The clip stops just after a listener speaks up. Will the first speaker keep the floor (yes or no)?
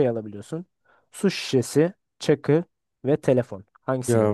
no